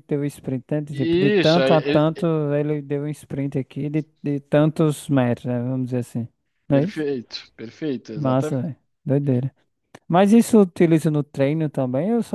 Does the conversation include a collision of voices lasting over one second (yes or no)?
yes